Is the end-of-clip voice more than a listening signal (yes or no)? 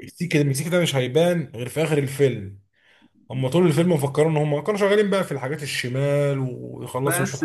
yes